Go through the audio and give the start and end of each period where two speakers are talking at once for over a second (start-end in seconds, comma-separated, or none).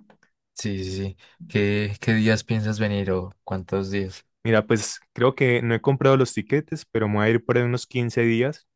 none